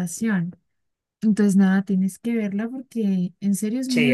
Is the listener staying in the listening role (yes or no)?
no